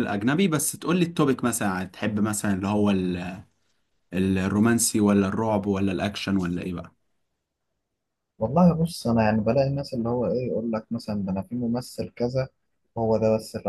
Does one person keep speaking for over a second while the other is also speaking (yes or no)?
no